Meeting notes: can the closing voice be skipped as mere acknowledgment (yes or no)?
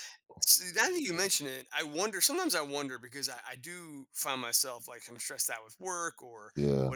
yes